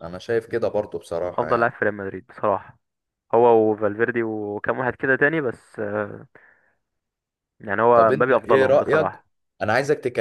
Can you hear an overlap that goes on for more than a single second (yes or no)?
yes